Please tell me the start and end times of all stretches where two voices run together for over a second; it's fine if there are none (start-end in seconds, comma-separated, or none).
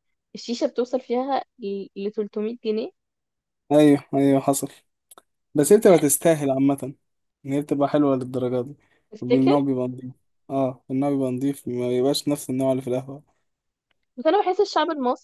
none